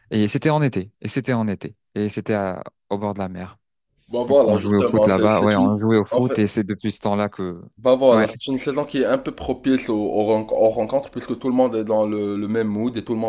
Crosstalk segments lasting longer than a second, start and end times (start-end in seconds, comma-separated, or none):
4.3-6.4